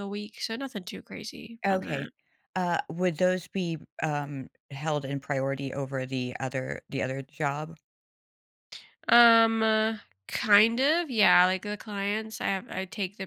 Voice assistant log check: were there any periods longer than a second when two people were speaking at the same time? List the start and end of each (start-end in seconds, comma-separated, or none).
none